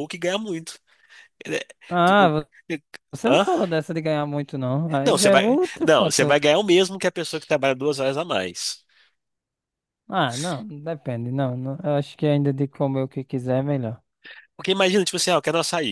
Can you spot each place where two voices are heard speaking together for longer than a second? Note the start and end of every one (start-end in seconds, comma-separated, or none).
5.0-6.4